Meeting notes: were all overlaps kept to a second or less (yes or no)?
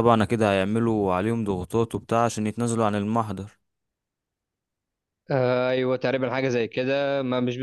yes